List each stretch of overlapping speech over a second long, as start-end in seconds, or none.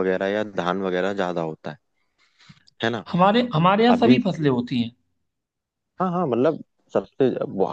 none